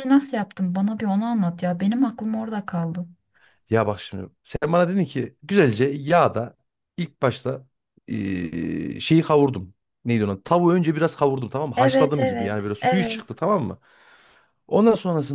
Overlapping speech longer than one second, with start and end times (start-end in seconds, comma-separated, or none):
11.8-13.2